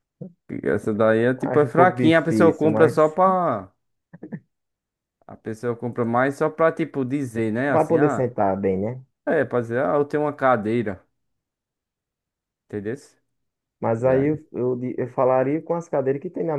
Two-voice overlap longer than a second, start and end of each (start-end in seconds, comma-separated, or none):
1.4-3.2